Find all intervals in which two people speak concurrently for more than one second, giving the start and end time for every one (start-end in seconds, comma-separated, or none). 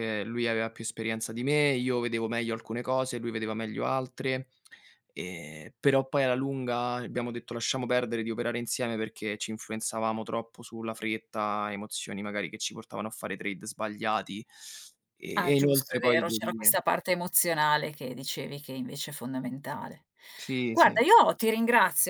15.3-16.7